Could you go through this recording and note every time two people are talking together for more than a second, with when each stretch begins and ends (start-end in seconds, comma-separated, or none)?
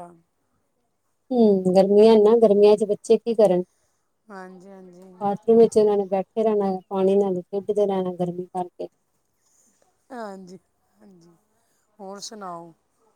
none